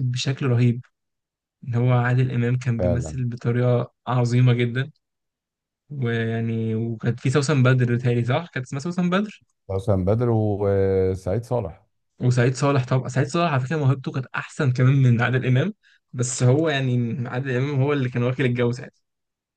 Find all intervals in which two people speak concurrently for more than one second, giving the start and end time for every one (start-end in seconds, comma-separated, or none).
none